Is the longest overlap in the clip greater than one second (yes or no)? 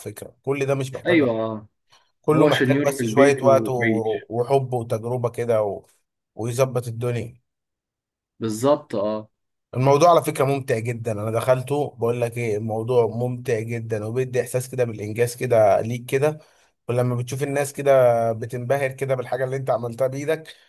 yes